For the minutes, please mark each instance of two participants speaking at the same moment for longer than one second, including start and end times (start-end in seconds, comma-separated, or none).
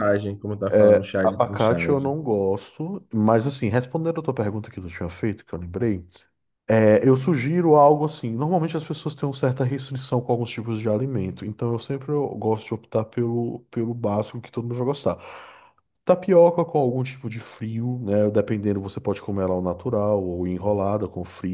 0.7-2.1